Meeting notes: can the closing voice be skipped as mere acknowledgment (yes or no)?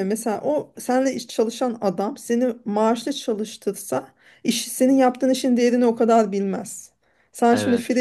yes